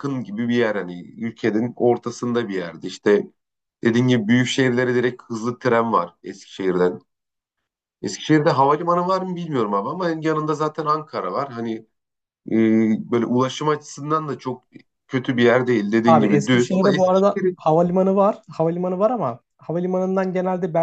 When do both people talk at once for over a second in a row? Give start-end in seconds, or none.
16.0-17.6